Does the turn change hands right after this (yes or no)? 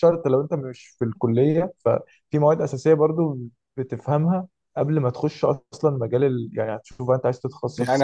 yes